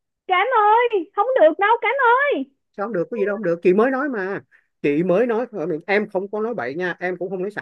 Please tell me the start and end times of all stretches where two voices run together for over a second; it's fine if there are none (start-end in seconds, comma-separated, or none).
none